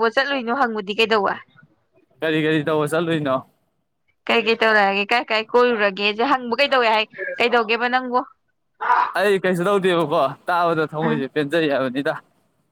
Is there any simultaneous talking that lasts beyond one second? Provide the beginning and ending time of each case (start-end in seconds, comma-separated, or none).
none